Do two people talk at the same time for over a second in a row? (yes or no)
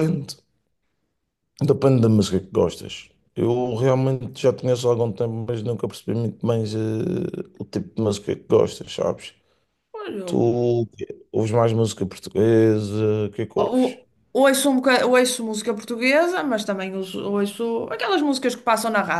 no